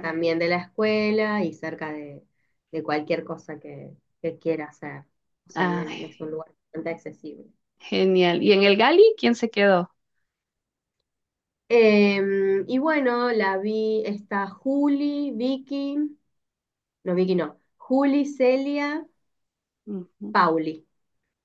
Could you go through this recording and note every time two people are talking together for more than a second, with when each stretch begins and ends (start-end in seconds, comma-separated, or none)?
none